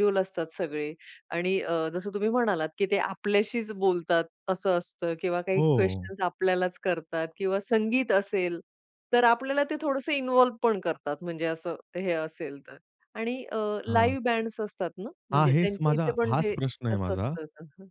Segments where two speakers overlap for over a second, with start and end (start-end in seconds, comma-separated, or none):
15.3-17.3